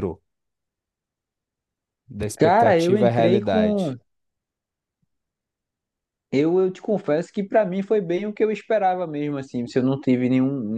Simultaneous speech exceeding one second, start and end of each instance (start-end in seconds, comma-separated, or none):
2.4-3.9